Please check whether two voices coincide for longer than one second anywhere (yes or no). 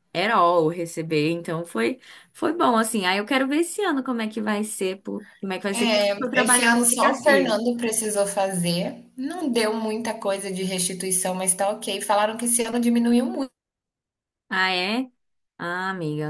yes